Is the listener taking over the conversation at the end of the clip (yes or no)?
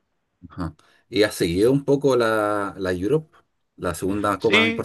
yes